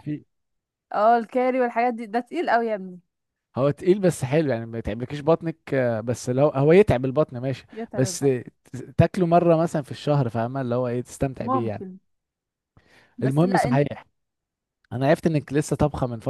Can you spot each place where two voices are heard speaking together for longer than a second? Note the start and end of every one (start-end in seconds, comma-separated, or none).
none